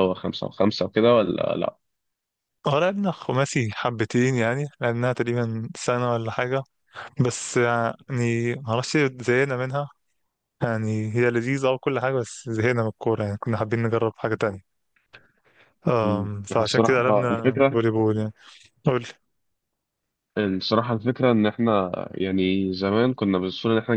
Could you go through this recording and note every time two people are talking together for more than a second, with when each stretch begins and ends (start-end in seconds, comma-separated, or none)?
16.0-17.8